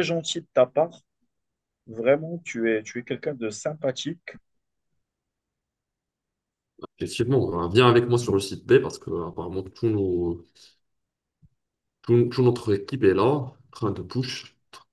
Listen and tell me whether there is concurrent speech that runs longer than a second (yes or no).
no